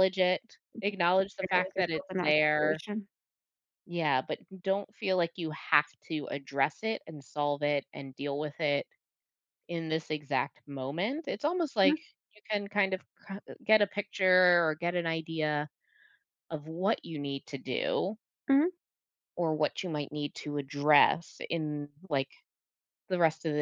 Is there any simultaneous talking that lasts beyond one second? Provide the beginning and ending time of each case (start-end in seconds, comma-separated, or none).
1.4-2.8